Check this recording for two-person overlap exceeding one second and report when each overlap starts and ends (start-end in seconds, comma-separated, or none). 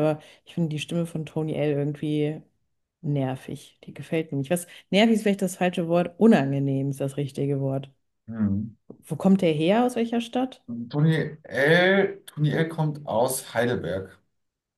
none